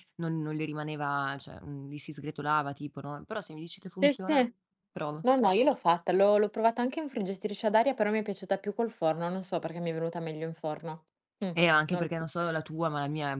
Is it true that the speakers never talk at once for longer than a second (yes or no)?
yes